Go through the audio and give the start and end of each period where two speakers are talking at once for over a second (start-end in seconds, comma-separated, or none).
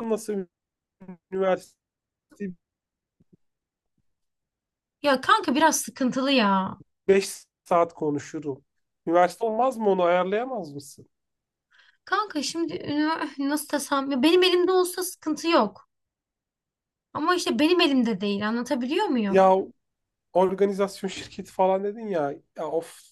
none